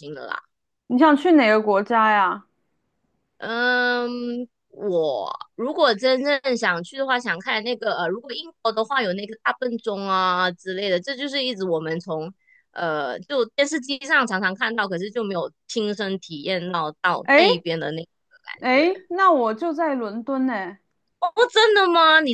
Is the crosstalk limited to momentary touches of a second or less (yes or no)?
yes